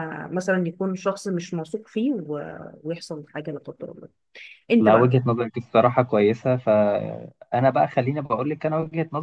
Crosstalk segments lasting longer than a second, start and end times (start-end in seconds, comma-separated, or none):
none